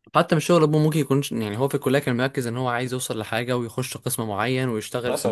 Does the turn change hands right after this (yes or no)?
no